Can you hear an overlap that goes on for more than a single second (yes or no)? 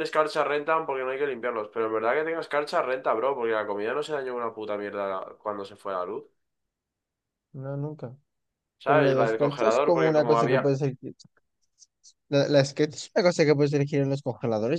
yes